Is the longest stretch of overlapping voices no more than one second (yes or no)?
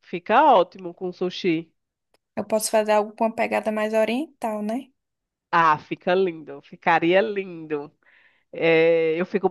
yes